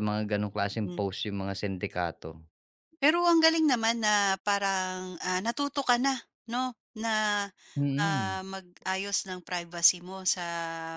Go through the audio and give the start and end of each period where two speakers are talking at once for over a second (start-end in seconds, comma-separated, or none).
none